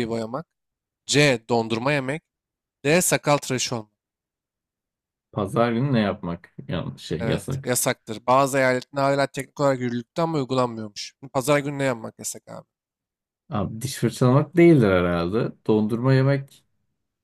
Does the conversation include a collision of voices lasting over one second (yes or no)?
no